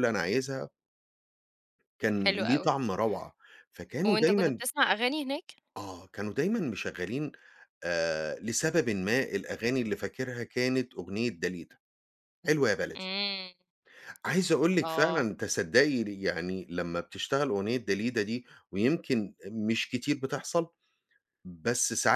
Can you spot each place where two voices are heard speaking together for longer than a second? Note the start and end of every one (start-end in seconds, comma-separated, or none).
none